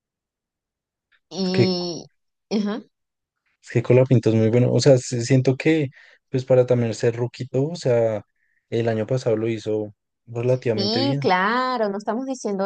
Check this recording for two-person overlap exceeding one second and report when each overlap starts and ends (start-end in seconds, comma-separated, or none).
none